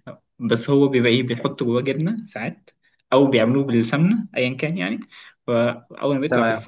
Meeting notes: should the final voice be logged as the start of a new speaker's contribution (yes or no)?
no